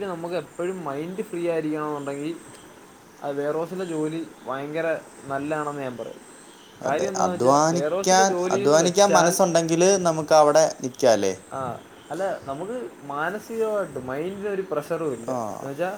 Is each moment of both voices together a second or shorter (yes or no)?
no